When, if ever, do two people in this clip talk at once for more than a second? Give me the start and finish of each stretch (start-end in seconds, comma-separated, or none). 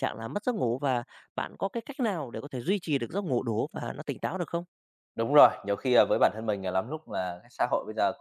none